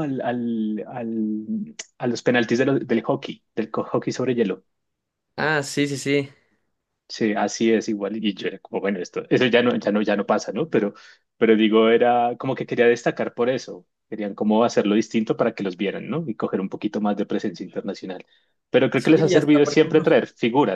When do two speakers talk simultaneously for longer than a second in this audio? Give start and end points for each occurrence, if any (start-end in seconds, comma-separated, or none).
18.9-20.2